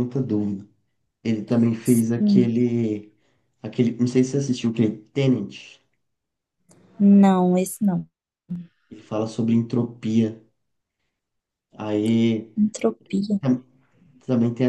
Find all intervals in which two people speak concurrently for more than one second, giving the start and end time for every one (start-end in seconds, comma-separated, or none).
none